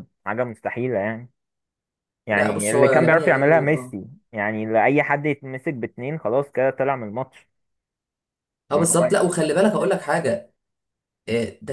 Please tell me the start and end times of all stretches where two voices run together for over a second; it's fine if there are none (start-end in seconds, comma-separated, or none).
2.3-4.0, 8.7-10.0